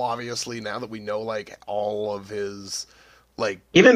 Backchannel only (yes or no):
no